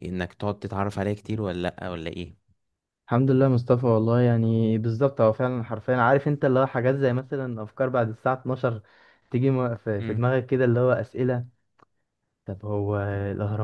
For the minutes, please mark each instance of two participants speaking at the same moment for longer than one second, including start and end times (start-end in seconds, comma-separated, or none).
none